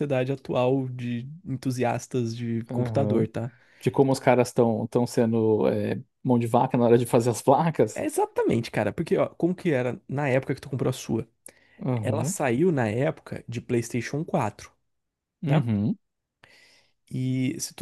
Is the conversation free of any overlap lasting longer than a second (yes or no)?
yes